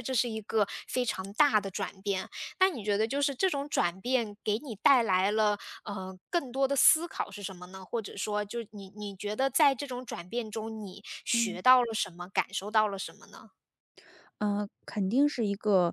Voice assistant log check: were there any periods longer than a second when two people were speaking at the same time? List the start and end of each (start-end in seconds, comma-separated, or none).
none